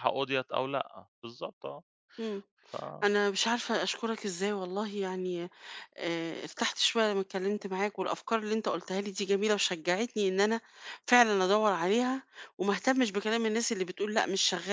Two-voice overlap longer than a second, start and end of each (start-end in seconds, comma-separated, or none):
none